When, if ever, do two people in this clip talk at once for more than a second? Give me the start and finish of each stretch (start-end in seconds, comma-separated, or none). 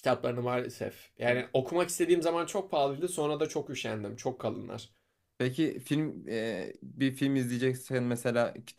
none